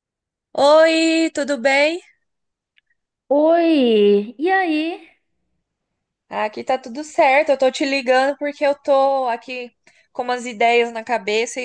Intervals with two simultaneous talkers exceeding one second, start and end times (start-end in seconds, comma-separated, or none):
none